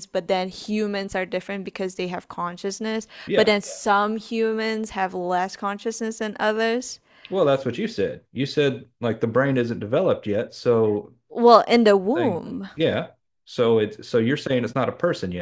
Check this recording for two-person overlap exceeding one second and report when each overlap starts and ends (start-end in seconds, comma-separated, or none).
none